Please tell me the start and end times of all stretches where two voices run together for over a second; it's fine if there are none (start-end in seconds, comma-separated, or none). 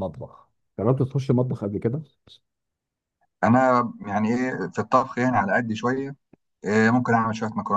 none